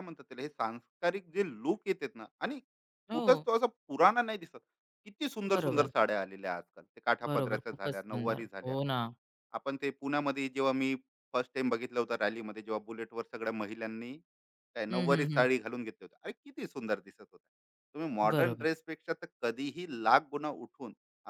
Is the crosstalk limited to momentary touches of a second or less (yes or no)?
no